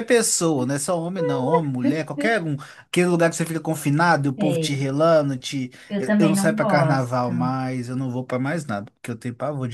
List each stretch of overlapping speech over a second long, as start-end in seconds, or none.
5.9-7.3